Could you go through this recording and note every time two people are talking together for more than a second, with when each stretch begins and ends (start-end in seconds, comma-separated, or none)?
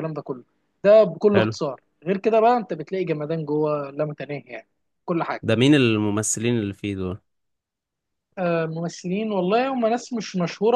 none